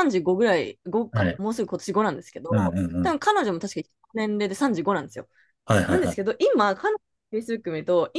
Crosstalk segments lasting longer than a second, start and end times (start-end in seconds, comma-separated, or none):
none